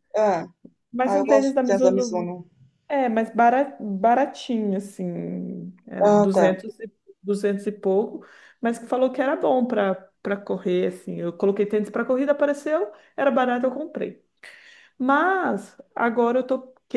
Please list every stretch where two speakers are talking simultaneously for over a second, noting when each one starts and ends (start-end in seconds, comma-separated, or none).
1.0-2.3